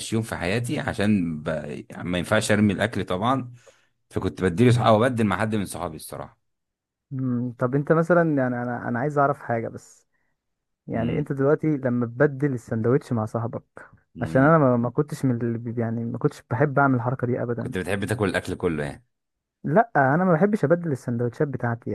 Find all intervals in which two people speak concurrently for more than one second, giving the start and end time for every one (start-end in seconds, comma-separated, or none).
none